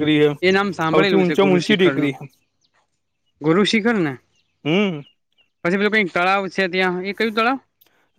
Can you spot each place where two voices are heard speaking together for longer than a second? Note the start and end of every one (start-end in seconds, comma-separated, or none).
0.9-2.1